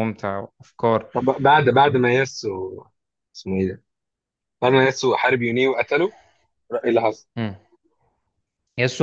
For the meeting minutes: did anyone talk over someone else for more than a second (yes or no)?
no